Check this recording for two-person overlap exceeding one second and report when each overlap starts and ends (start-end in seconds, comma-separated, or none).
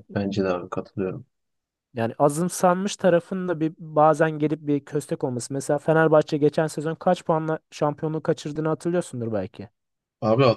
none